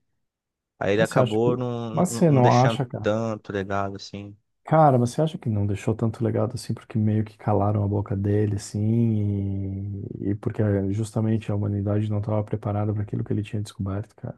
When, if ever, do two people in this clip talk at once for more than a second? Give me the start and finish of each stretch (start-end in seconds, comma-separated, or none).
1.0-3.1